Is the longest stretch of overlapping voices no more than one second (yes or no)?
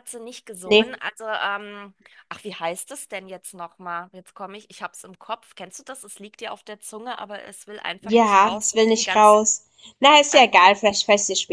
no